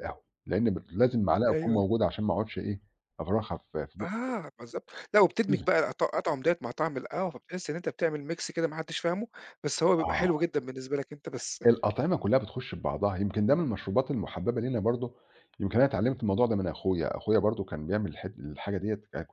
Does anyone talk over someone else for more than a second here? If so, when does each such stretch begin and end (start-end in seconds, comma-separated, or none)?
none